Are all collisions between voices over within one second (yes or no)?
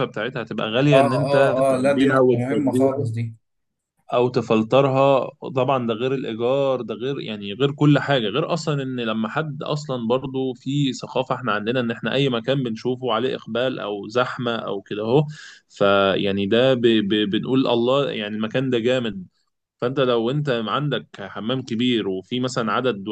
no